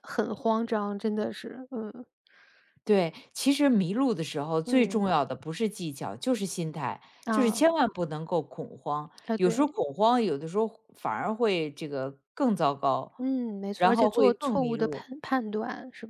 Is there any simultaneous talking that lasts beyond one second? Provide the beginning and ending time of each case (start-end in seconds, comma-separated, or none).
13.8-15.0